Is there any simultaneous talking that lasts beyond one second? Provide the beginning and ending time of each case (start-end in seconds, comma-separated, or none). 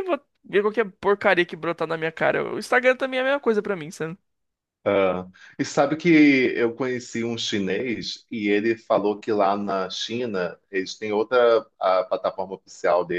none